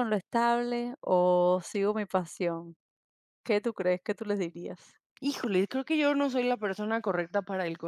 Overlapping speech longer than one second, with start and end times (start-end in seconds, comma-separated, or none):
none